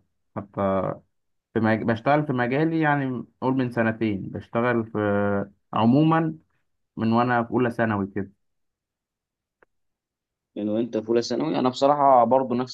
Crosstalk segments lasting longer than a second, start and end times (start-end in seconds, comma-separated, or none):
none